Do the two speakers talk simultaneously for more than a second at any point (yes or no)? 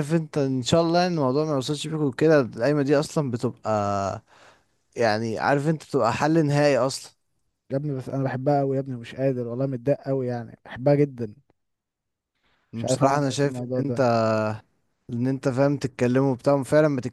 yes